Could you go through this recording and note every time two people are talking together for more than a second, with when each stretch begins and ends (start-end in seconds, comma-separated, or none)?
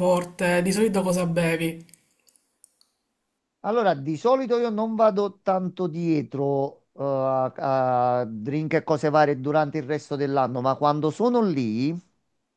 none